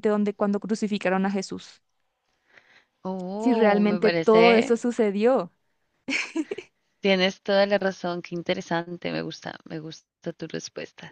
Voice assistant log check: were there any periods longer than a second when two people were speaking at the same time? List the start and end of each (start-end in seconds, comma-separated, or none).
3.4-4.8